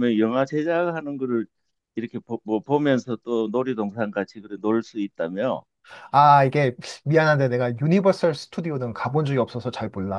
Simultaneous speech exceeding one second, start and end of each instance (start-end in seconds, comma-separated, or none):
none